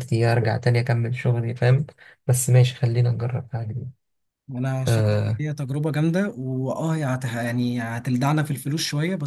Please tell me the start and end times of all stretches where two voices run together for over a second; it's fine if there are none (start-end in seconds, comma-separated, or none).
none